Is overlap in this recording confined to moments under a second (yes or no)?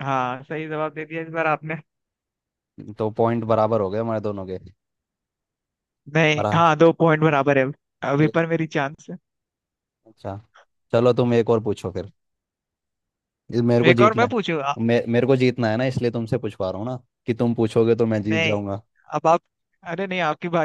yes